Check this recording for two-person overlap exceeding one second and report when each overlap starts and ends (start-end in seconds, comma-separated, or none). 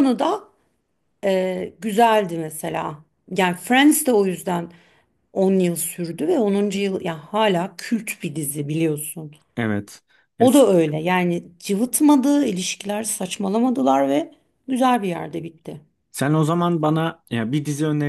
none